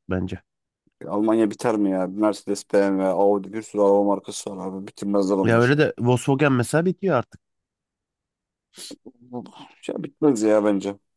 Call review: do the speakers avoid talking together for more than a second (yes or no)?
yes